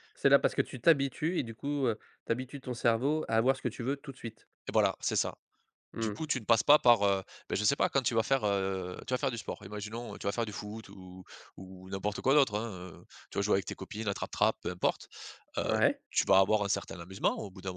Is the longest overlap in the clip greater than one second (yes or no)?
no